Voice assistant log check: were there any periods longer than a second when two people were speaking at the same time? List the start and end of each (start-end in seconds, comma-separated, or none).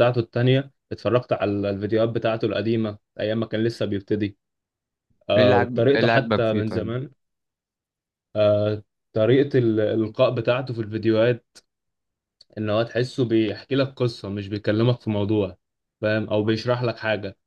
5.4-6.9